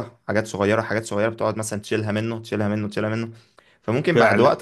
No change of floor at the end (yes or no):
yes